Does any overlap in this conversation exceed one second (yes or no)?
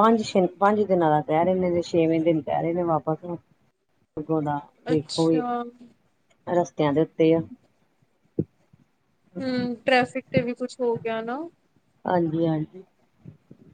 no